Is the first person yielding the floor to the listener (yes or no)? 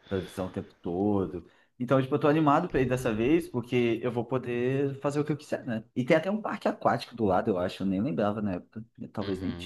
yes